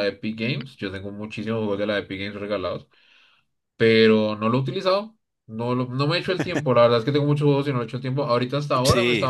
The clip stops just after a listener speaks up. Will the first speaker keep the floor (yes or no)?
yes